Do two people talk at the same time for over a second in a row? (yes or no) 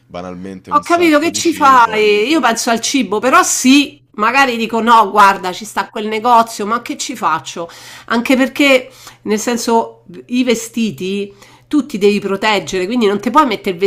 yes